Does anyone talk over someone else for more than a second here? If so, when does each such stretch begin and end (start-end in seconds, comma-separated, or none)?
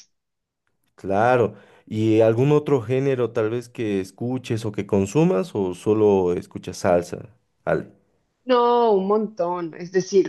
none